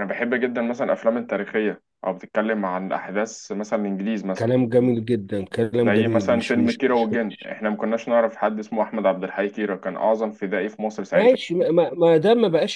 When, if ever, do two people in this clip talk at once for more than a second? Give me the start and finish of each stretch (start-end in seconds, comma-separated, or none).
5.8-7.1